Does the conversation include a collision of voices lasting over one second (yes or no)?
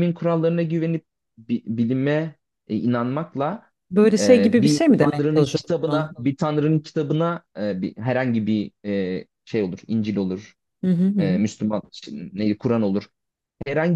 yes